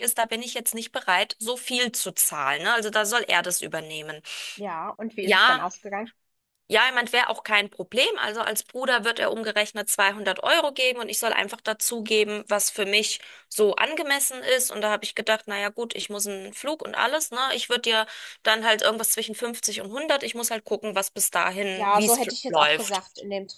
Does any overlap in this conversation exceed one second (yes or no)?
yes